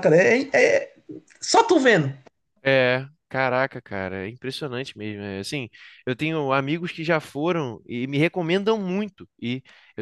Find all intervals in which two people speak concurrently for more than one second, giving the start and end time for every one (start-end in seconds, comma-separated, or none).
none